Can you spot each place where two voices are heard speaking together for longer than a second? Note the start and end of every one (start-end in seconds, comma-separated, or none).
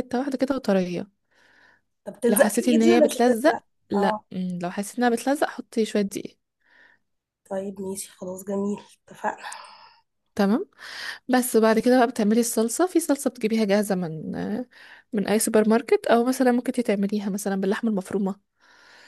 2.3-4.2